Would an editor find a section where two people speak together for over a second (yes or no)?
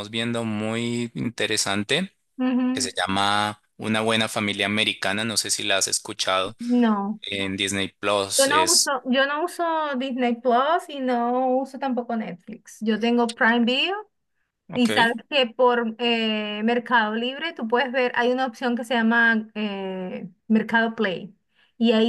no